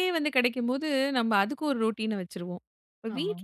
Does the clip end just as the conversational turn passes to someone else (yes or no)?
no